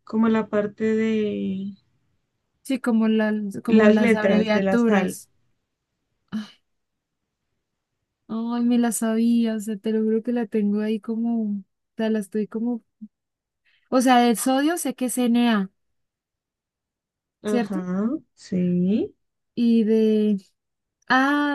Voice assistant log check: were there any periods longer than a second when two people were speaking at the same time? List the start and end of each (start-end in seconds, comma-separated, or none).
3.7-5.2